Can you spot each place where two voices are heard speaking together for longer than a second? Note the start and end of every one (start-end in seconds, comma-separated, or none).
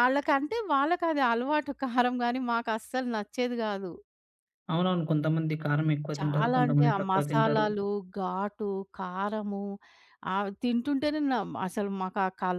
6.2-7.7